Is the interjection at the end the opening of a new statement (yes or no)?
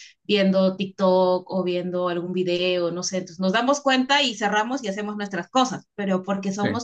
no